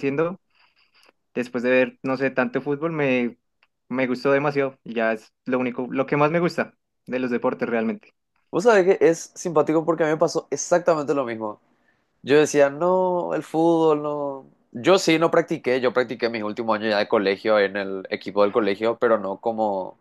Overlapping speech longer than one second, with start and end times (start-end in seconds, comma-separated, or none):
none